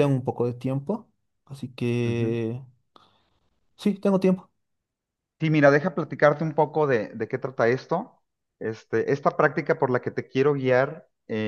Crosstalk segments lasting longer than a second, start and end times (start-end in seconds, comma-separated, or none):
none